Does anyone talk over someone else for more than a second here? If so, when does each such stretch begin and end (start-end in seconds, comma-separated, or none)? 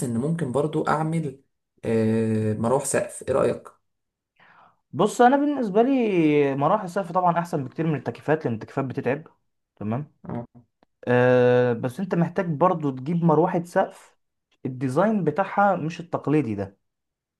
none